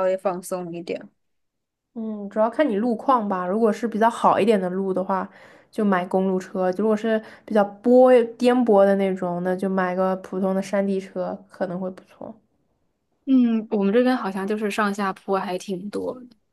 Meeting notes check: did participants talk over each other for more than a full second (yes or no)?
no